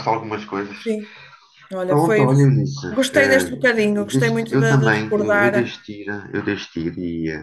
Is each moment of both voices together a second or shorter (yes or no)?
no